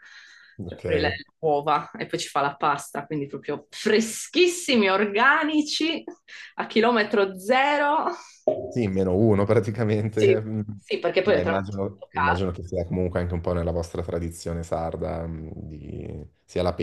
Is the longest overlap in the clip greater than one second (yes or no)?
yes